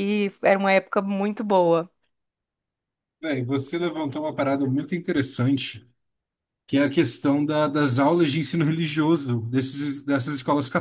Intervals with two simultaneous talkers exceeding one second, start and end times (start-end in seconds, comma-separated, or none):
none